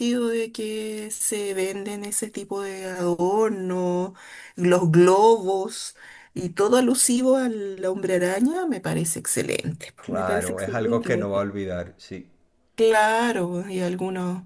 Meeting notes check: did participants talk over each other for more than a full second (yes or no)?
yes